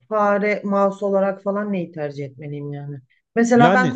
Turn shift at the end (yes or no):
no